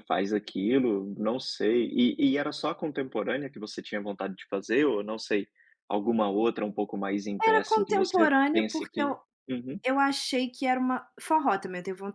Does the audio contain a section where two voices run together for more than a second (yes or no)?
yes